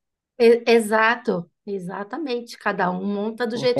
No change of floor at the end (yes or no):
no